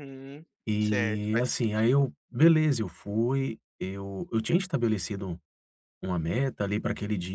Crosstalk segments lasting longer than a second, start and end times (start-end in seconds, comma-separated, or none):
0.8-2.1